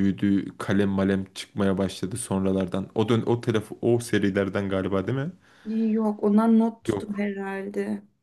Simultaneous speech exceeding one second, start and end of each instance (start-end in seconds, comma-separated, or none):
none